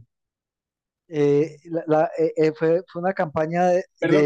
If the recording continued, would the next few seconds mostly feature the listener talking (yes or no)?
yes